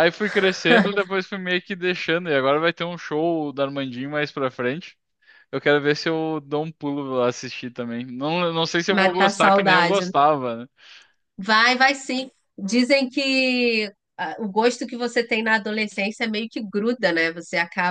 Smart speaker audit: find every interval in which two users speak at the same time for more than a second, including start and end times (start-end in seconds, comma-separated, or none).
8.9-10.1